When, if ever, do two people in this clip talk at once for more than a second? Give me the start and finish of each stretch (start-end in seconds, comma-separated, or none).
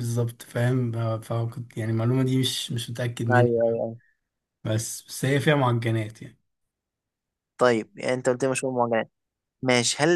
none